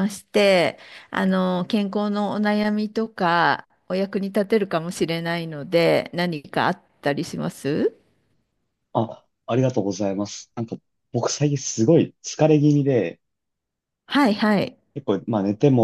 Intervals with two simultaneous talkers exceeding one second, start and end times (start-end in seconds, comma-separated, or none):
none